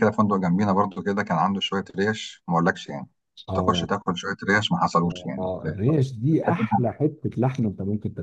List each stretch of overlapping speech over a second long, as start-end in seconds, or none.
5.4-6.7